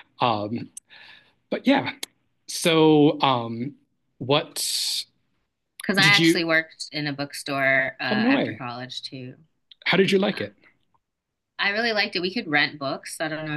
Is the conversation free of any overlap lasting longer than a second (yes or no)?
yes